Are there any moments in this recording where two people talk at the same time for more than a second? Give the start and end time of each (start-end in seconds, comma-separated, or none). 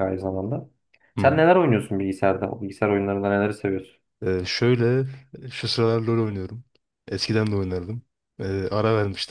none